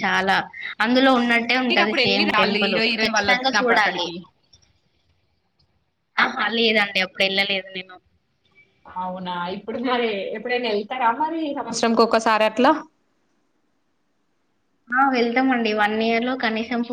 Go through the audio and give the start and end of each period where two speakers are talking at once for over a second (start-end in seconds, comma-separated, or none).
1.7-4.1